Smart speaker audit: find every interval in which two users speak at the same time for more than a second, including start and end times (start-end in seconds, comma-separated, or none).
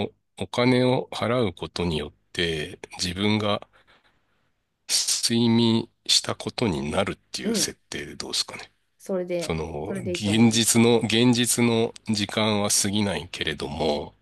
9.4-10.9